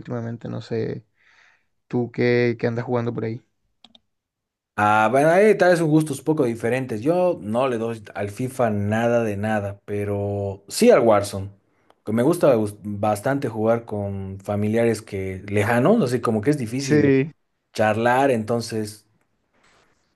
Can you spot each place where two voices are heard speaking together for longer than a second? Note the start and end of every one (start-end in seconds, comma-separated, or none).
none